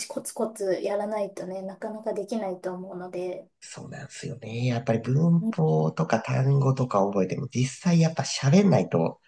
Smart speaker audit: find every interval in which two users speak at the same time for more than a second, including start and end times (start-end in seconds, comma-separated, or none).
none